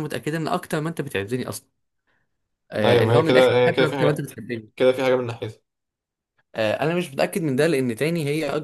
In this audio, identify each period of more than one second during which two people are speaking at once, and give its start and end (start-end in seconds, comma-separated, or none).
2.9-4.3